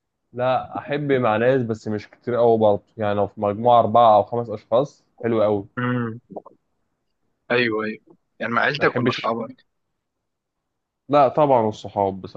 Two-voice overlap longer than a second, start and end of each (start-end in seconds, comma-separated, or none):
none